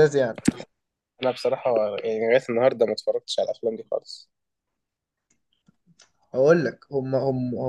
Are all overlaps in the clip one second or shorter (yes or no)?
yes